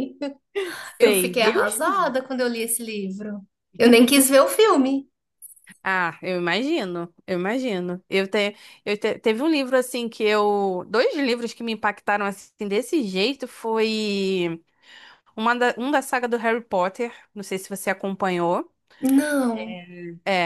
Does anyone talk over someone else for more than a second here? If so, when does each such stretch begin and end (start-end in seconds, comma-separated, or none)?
1.0-2.2